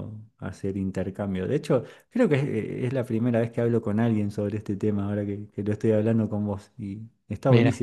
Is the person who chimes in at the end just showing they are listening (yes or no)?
yes